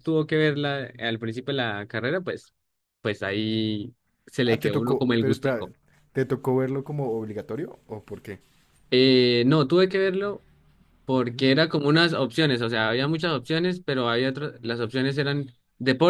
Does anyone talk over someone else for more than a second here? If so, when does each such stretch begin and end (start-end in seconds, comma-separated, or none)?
4.5-5.7